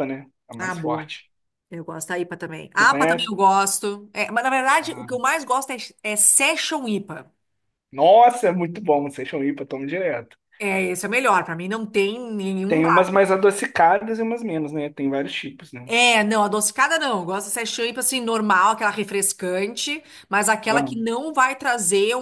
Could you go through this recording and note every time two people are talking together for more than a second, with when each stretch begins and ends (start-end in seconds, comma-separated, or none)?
none